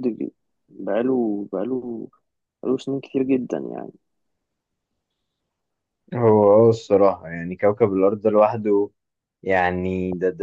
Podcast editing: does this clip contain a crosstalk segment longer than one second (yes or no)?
no